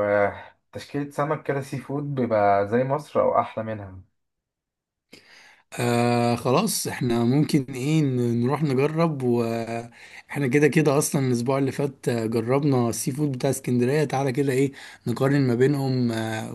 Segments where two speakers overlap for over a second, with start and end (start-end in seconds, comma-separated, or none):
none